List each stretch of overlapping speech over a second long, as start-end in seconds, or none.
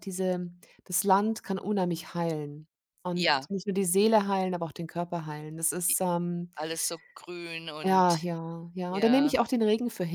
none